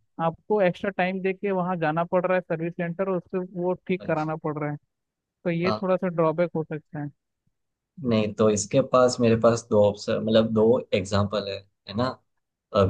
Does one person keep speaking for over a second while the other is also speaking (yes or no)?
no